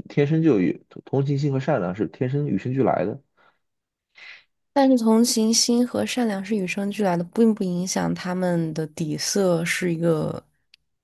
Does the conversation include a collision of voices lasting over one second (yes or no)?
no